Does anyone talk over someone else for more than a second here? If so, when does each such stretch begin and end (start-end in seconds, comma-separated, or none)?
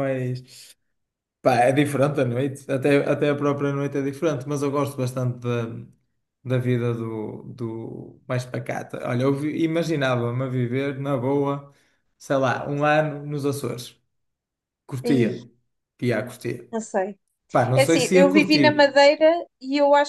17.7-19.0